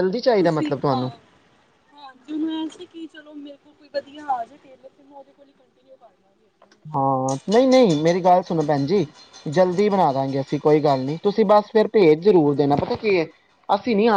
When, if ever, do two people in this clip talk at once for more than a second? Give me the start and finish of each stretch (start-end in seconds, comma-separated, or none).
none